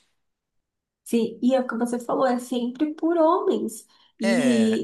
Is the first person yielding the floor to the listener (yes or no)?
no